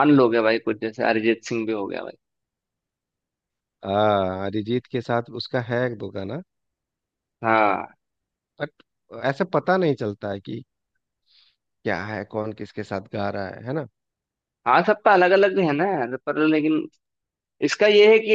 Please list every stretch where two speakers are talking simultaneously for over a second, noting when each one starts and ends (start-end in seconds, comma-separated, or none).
none